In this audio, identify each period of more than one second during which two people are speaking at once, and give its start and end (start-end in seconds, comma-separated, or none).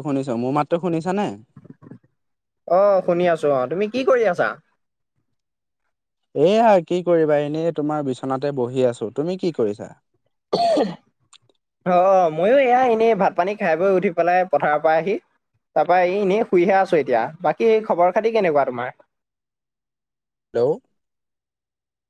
none